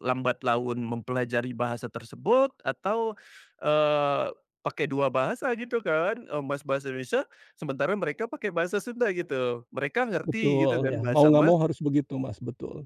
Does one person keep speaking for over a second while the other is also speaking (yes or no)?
yes